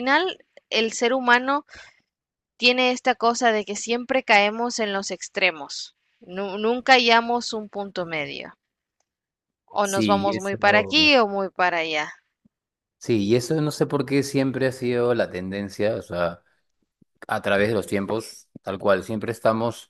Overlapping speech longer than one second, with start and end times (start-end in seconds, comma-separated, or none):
9.8-11.1